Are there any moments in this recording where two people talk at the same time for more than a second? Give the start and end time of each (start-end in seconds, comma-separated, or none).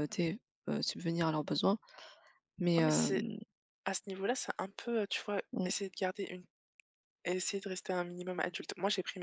none